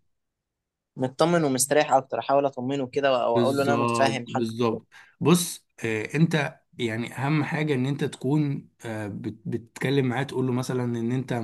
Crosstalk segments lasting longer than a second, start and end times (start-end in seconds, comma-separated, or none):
3.3-4.7